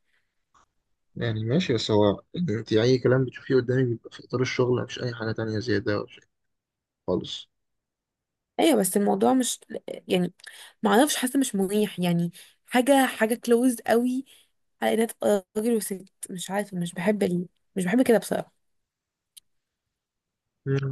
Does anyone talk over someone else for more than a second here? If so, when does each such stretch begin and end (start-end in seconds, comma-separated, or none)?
none